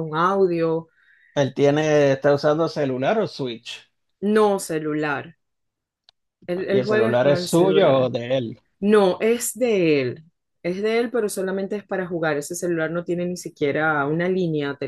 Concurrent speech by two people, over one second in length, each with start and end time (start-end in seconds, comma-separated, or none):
6.7-8.1